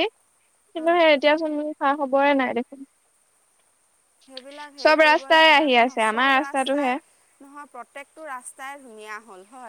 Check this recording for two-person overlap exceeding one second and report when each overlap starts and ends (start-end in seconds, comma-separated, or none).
4.8-6.9